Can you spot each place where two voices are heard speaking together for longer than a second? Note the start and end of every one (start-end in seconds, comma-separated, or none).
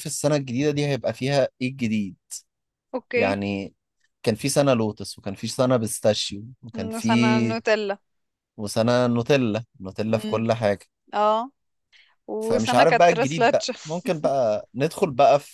12.4-13.7